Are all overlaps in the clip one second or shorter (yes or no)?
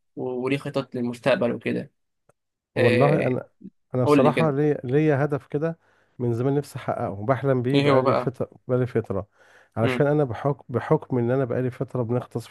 yes